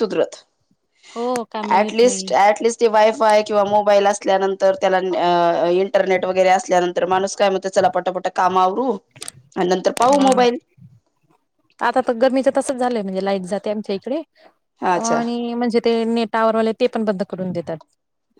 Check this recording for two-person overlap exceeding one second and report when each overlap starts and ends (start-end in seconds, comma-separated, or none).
none